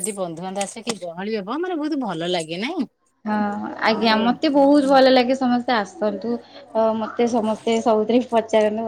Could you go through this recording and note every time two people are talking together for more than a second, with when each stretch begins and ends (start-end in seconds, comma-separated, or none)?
none